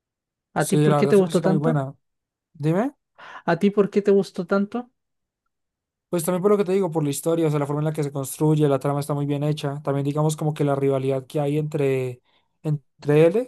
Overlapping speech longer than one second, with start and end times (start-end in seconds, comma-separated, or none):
0.6-1.8